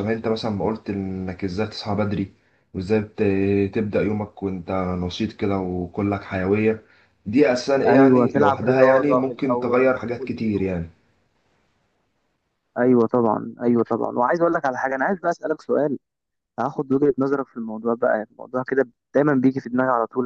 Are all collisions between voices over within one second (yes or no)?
no